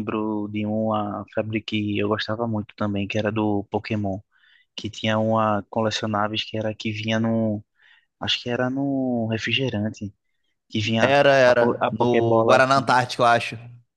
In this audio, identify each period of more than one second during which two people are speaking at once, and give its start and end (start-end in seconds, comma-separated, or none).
11.0-12.9